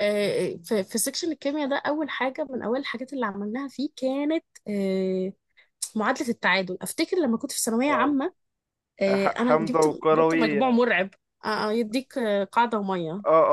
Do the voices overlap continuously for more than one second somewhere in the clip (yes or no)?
yes